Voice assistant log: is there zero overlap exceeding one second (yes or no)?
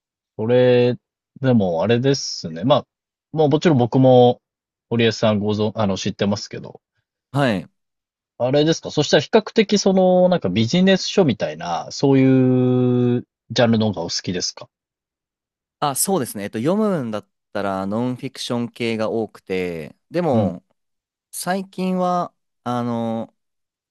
yes